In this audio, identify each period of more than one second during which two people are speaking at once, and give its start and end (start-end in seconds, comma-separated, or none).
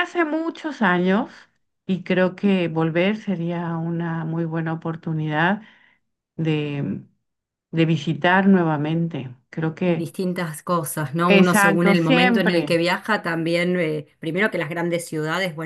11.2-12.7